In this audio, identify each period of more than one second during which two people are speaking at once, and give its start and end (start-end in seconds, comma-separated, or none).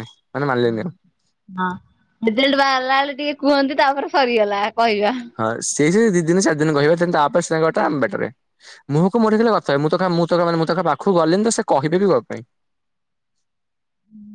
none